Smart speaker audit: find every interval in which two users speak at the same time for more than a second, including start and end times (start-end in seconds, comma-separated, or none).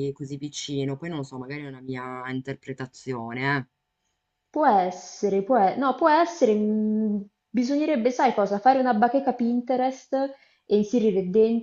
none